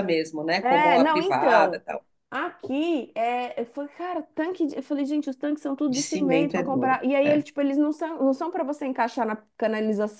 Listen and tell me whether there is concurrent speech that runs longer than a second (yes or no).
yes